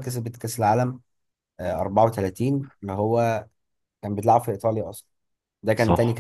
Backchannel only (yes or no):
yes